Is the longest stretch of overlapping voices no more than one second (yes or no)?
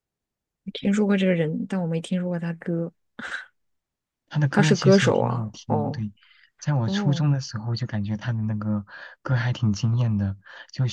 no